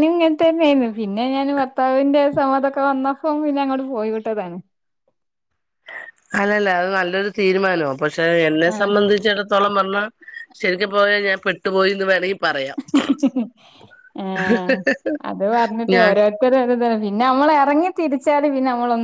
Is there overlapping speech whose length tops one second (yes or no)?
no